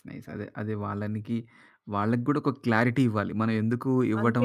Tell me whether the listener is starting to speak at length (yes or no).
no